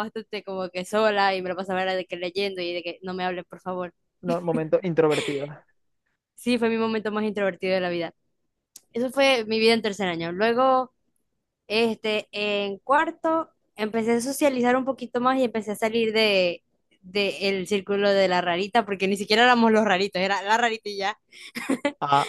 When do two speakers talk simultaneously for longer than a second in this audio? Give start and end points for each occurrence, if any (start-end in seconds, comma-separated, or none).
none